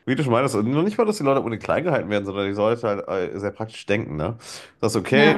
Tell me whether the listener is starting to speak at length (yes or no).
no